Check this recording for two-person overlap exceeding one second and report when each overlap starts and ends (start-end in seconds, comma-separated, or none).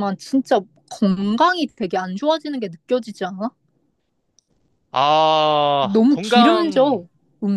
5.8-7.0